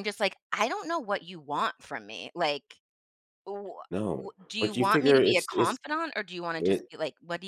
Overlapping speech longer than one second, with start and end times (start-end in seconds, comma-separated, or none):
3.9-5.8